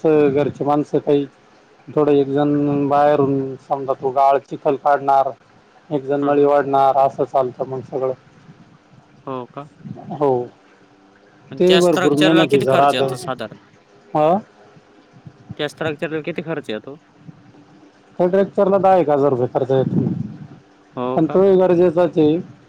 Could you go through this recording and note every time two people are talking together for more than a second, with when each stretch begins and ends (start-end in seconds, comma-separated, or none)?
11.6-13.1